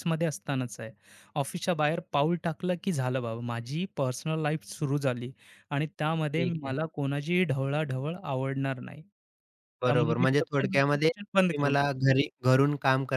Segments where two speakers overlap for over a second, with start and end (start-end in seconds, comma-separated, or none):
9.8-11.8